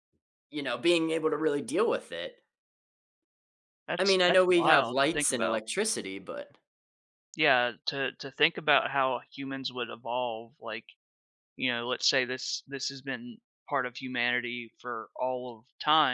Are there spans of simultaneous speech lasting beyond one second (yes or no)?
yes